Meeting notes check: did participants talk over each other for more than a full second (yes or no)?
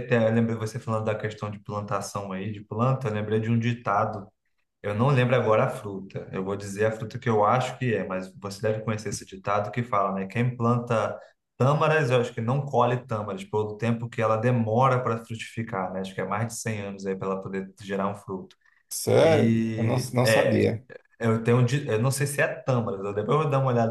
yes